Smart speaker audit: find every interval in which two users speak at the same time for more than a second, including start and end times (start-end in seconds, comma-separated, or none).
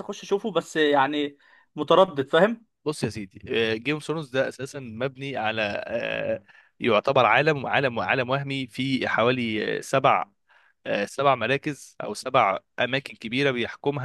none